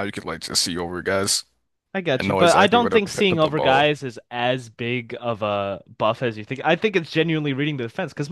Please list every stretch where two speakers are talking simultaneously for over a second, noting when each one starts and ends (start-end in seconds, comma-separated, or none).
2.2-3.9